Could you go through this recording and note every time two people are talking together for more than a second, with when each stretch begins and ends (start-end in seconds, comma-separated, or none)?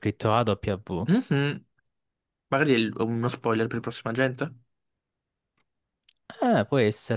none